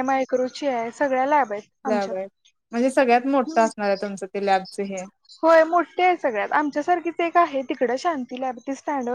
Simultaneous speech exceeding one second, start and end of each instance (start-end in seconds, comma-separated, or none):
none